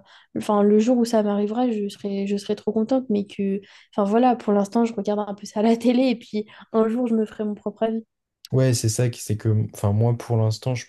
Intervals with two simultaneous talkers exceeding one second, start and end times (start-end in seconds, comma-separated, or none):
none